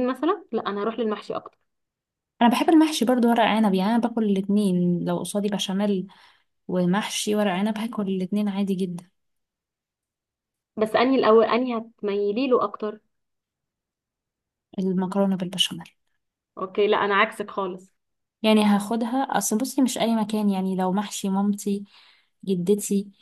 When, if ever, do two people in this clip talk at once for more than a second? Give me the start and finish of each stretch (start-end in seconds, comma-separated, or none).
none